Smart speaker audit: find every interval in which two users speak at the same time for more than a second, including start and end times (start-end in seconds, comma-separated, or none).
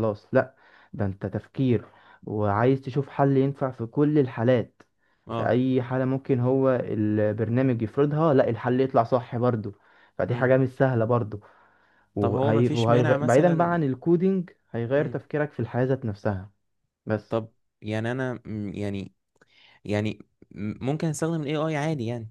12.2-13.8